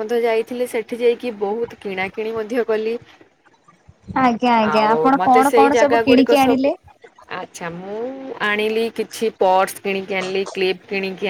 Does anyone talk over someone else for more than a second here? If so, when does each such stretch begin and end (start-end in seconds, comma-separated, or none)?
4.7-6.7